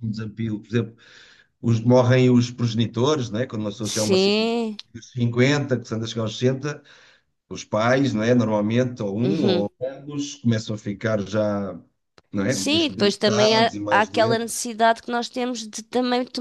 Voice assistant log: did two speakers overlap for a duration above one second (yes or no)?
yes